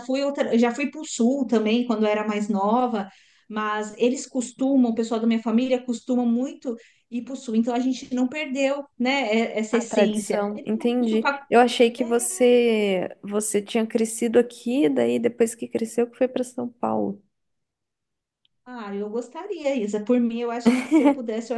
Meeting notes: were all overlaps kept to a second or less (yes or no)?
no